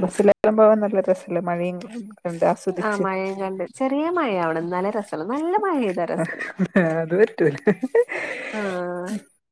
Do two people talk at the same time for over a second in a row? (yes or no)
no